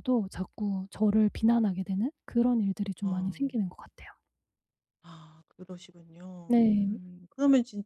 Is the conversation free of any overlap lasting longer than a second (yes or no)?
yes